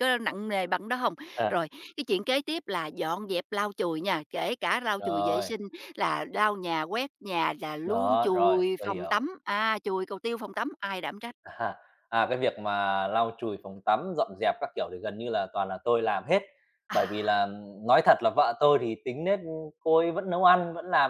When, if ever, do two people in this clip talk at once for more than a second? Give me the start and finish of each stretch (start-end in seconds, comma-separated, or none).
7.8-9.3